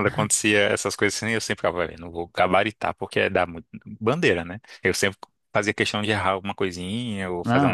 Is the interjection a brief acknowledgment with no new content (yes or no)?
yes